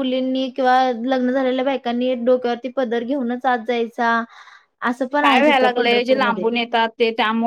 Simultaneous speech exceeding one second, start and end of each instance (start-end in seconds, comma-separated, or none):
5.2-6.5